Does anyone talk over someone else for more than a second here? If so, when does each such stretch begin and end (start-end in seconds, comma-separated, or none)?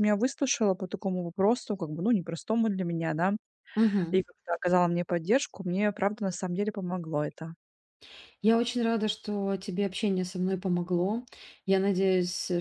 none